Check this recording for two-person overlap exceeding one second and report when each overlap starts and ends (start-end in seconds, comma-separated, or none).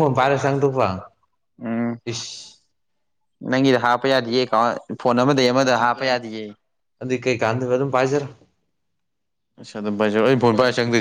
none